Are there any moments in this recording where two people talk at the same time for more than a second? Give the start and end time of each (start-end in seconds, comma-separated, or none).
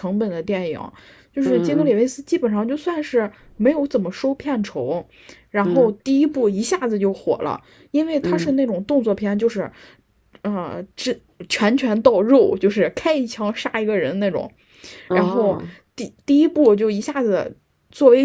none